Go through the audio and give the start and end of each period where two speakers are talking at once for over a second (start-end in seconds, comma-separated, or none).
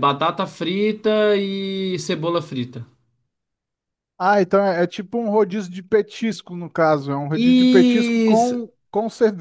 7.3-8.6